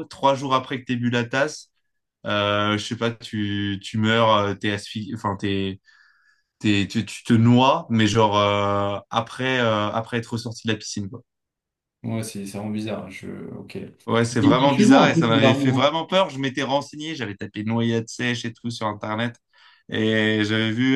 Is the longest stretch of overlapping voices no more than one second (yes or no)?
no